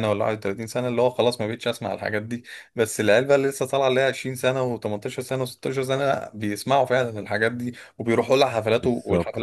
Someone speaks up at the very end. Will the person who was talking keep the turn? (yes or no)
no